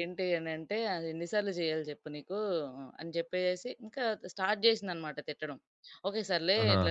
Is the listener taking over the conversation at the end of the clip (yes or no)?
no